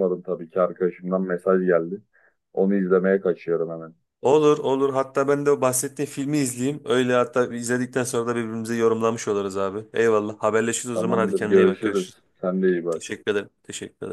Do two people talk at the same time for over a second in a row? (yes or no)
yes